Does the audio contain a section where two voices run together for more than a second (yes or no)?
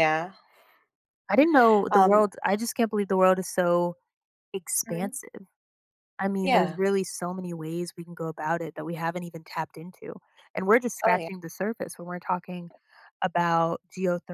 no